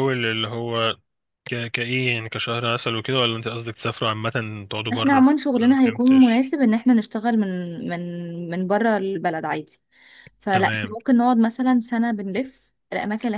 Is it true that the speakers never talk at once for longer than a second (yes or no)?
no